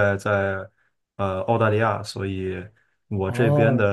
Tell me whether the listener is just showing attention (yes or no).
yes